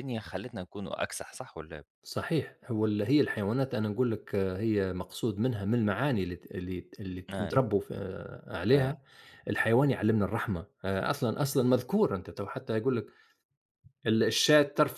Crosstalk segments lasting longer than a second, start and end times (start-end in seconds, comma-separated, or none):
none